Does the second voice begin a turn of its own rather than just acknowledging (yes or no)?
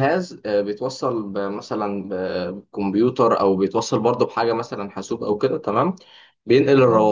no